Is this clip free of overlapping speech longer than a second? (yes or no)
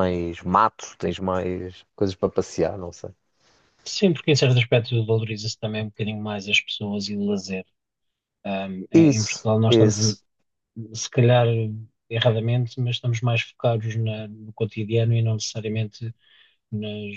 no